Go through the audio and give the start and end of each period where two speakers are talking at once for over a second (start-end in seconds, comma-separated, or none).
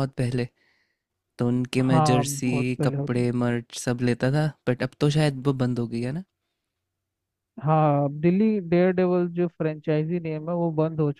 1.8-3.3